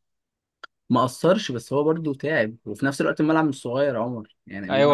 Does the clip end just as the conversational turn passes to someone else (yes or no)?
yes